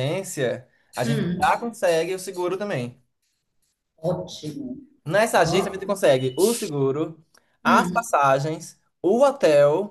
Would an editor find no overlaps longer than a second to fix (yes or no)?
yes